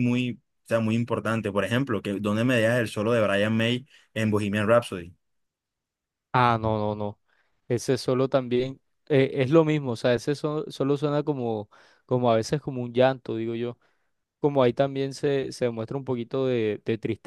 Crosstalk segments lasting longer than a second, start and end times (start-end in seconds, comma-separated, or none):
none